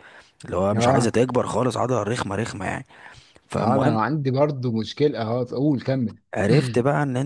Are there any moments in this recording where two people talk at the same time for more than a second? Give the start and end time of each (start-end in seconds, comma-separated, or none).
none